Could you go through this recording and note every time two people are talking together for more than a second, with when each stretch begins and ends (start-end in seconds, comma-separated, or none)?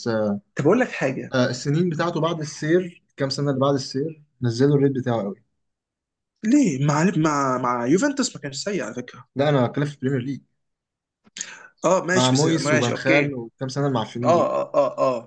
12.1-13.4